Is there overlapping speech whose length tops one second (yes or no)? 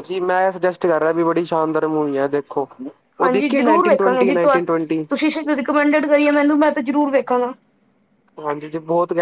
no